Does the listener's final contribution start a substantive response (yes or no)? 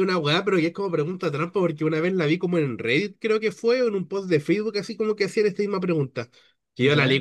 no